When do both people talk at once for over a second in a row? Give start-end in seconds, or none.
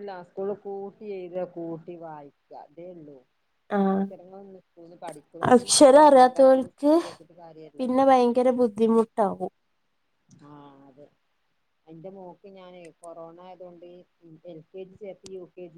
none